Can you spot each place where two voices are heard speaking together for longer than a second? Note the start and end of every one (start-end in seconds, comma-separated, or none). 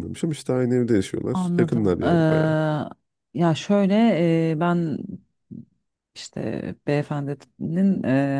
1.3-2.5